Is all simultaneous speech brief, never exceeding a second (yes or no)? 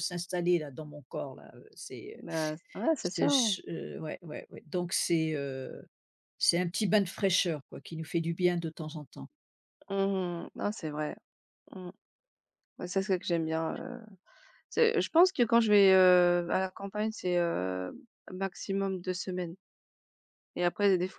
yes